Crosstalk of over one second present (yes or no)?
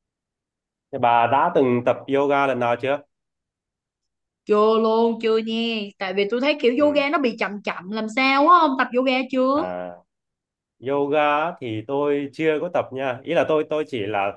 no